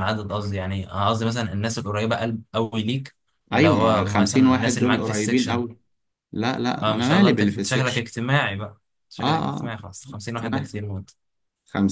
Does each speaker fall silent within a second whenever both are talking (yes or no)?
no